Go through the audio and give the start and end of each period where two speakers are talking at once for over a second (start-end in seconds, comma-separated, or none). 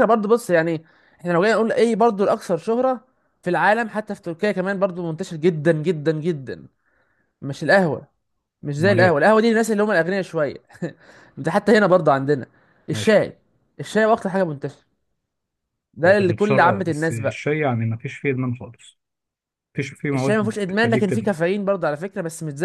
16.1-17.4, 20.1-21.4